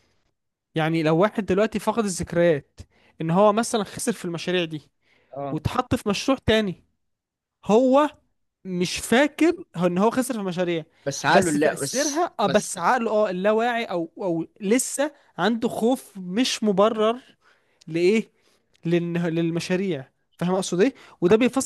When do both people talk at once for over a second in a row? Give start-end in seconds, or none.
11.3-12.7